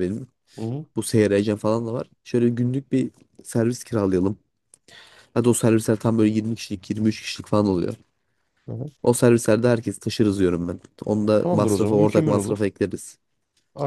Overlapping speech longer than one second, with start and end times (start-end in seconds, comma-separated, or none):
11.4-12.6